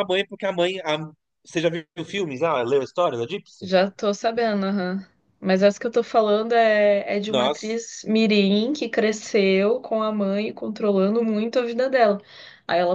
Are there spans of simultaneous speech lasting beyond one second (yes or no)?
no